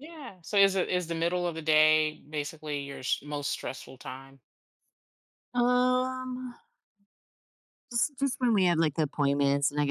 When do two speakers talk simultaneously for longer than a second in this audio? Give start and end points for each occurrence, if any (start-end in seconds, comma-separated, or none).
none